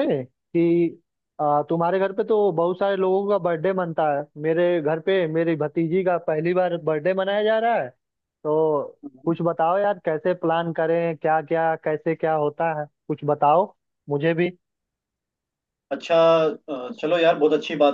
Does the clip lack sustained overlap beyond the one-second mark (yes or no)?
yes